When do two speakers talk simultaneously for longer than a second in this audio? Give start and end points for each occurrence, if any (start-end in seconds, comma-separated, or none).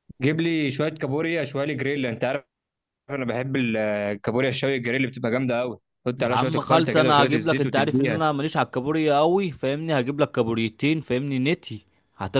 6.2-8.2